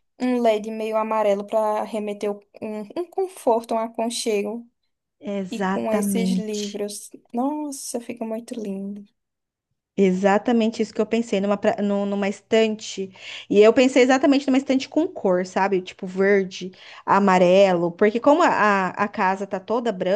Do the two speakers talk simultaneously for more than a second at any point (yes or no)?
yes